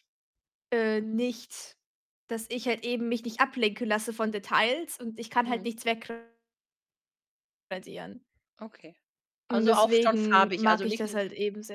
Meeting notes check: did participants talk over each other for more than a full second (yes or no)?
yes